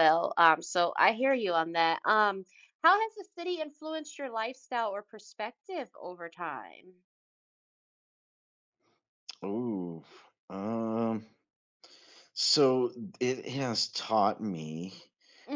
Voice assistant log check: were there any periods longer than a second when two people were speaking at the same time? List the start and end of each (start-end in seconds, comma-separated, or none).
none